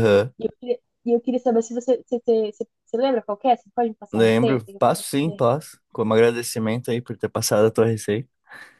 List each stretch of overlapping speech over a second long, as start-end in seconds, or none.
4.1-5.4